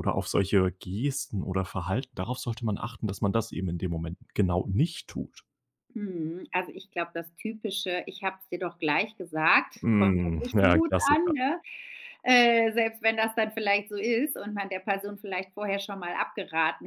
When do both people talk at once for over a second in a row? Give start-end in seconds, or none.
9.8-11.3